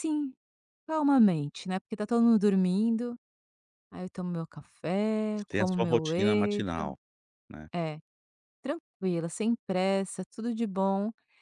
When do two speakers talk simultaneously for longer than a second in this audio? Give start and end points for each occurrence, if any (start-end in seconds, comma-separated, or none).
5.3-6.9